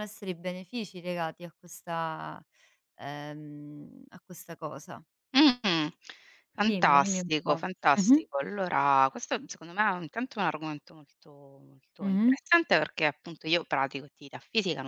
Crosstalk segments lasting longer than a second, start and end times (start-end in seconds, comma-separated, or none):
6.7-8.2